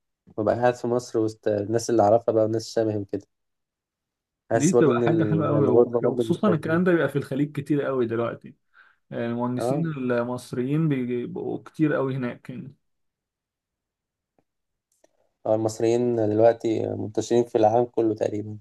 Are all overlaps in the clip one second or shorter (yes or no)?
no